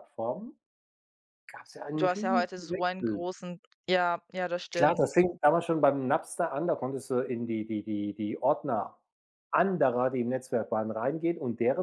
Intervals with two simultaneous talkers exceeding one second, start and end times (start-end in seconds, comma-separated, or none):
2.0-3.3